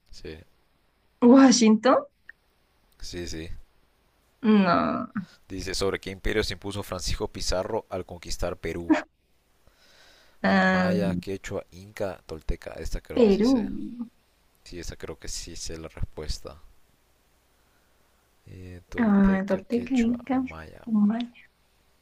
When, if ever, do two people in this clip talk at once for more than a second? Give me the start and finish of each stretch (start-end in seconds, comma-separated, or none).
18.9-20.4